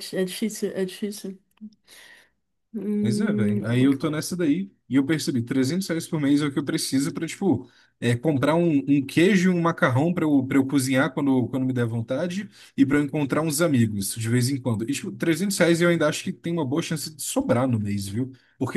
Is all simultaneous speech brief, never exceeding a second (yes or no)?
no